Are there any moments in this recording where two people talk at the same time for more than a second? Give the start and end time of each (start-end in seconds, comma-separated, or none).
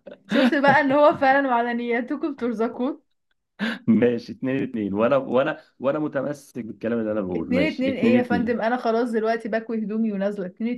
7.3-8.7